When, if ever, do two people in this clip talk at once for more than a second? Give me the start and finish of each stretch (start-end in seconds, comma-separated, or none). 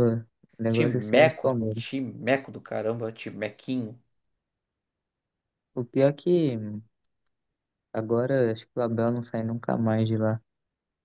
0.7-1.9